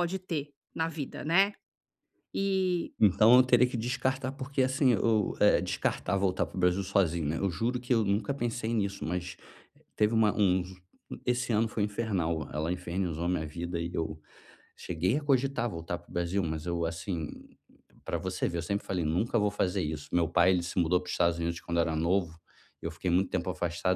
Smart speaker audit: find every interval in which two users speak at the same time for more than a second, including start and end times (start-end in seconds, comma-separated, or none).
none